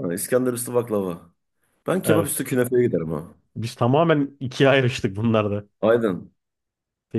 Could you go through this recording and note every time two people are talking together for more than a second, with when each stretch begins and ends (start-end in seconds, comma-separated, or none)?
none